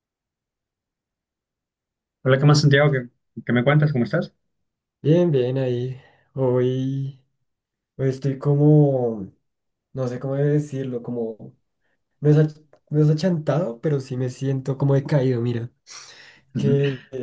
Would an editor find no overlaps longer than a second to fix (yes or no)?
yes